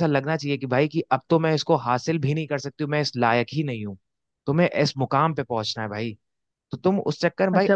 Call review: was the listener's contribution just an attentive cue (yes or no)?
no